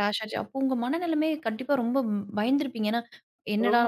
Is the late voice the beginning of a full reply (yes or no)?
no